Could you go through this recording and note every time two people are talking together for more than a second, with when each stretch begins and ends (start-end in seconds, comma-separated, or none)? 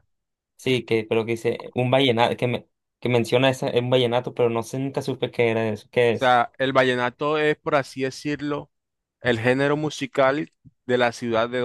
none